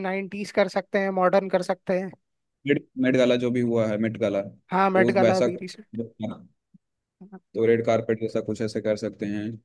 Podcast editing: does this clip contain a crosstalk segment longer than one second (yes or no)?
yes